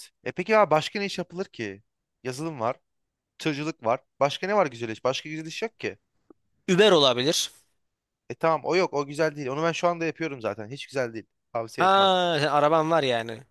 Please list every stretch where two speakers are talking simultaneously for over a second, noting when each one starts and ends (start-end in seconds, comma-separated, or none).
none